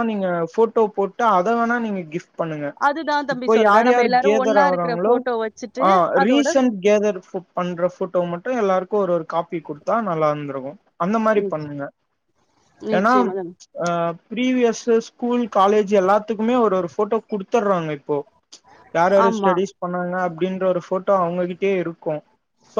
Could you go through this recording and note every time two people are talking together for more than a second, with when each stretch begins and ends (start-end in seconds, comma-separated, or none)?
3.3-5.1